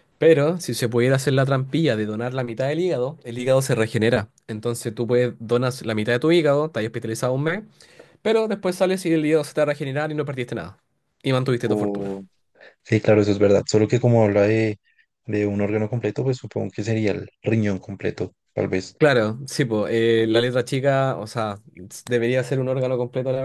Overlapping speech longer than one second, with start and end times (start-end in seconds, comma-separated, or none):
none